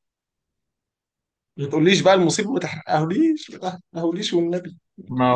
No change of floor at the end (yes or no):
no